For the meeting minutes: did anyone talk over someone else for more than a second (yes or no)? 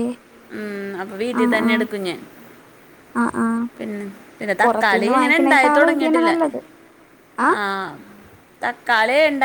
yes